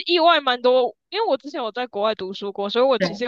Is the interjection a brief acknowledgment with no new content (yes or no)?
yes